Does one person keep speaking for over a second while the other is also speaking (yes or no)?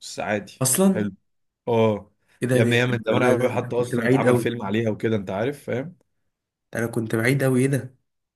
yes